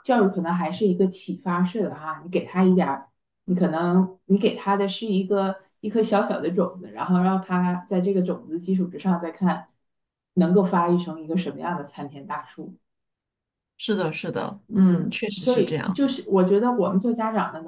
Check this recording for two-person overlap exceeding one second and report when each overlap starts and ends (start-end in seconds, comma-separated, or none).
14.7-16.1